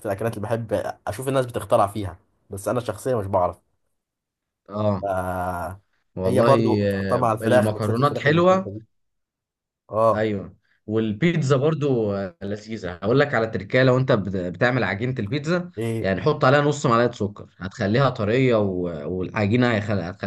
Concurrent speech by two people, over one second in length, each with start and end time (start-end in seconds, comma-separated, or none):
6.2-8.7